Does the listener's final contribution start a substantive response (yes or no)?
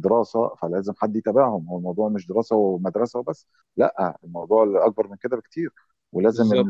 no